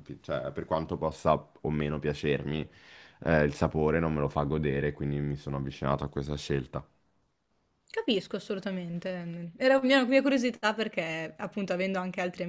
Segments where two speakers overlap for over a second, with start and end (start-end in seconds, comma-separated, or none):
none